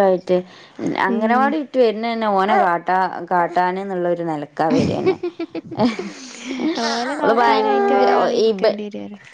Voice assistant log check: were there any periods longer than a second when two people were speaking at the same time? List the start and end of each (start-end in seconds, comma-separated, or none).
7.2-8.7